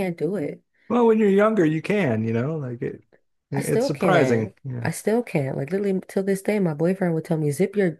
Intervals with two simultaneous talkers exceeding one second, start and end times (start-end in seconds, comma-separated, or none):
3.5-4.9